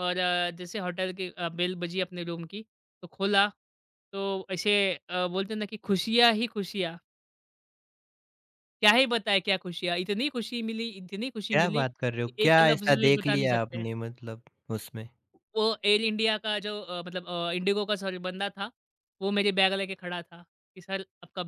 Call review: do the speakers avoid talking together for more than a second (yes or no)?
no